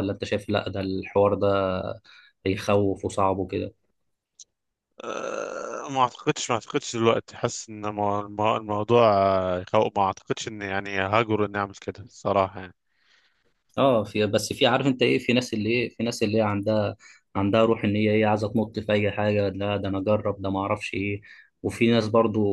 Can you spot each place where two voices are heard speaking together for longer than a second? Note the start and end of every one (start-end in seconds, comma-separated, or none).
none